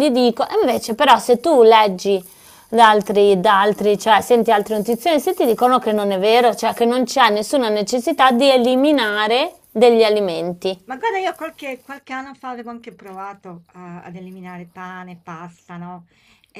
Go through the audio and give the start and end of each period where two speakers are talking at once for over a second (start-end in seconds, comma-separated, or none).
none